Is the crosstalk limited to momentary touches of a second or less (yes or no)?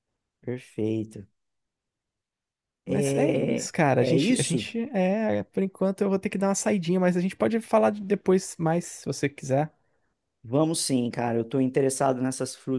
no